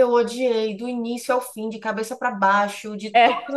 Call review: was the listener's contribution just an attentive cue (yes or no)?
yes